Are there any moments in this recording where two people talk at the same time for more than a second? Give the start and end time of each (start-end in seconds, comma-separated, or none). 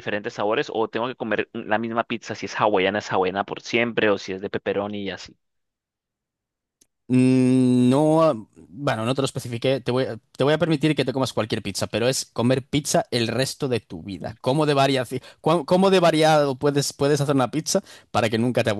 none